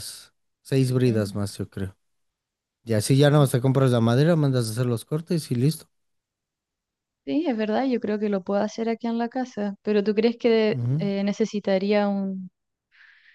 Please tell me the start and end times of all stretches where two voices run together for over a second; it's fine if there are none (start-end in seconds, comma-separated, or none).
none